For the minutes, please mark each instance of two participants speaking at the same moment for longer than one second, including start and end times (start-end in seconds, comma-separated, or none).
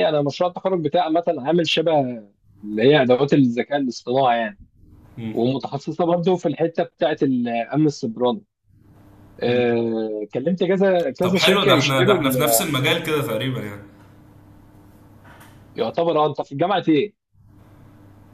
11.2-12.7